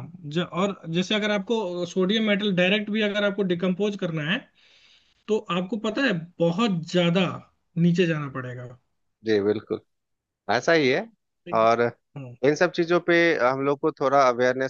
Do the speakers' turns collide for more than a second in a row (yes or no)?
no